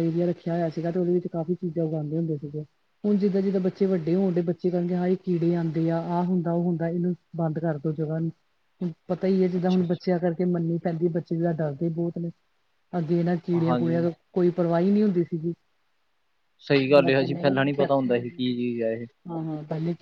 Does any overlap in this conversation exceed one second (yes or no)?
yes